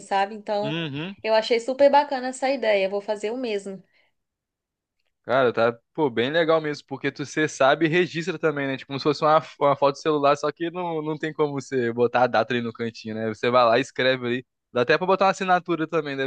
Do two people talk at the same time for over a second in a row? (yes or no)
no